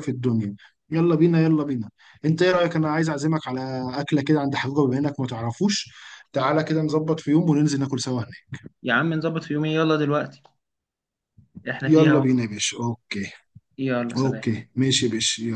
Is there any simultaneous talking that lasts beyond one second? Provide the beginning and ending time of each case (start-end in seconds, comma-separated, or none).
none